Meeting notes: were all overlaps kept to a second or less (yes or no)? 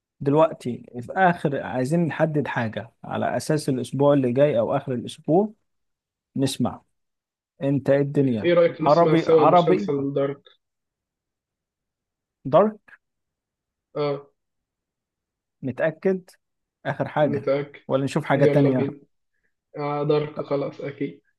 no